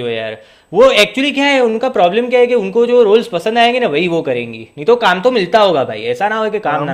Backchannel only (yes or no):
no